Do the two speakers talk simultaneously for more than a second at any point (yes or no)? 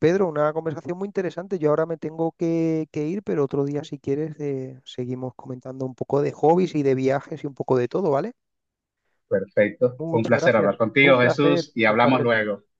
yes